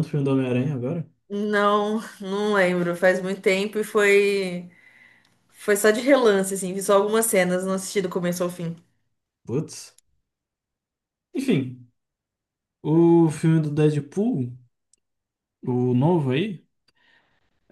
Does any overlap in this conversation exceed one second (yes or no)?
no